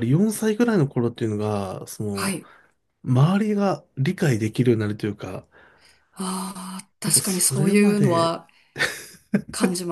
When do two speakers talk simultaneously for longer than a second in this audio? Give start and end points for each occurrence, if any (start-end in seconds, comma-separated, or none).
7.0-8.4